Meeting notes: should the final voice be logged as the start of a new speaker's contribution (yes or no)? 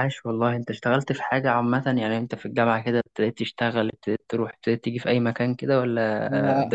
yes